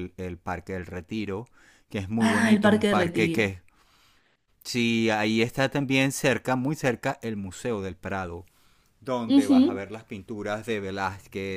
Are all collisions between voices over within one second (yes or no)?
no